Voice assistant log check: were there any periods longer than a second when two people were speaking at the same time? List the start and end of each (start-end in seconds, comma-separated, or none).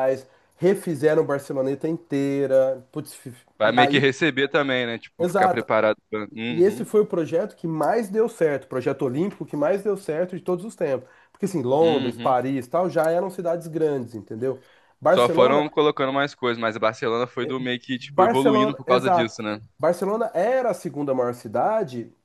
18.0-19.4